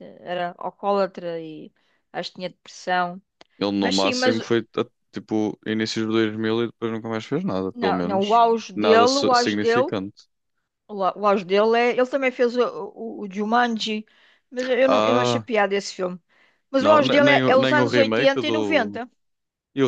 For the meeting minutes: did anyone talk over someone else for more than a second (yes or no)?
yes